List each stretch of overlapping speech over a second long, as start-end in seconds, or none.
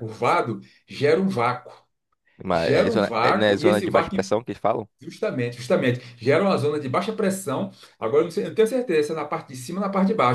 2.5-4.2